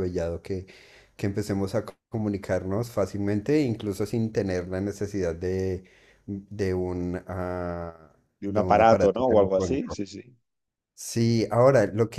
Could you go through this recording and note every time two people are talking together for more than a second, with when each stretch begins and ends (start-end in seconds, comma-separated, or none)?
8.4-10.0